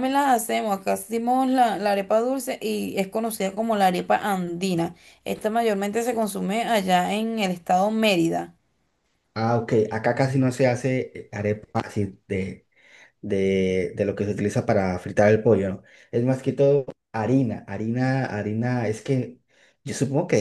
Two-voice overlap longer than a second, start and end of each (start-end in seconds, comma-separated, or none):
none